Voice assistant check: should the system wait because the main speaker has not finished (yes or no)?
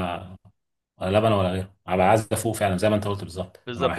no